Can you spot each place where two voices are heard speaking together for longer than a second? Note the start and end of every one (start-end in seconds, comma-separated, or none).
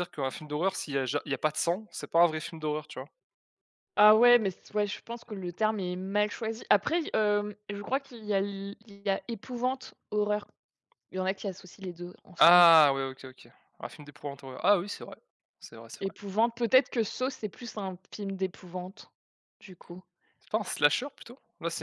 none